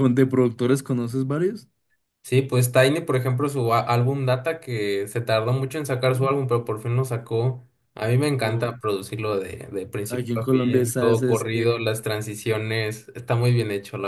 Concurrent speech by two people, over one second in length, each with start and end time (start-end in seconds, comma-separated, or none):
10.1-11.7